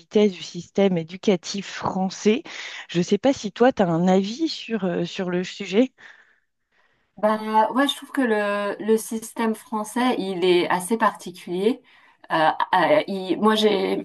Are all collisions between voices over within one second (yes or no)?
yes